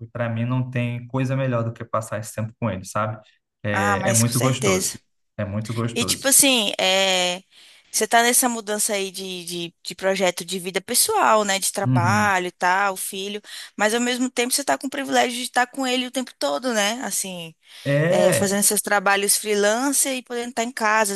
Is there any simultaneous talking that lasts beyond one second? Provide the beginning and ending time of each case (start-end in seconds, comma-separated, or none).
3.7-5.0